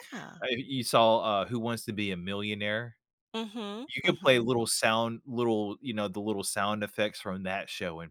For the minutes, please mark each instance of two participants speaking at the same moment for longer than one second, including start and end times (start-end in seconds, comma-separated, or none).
none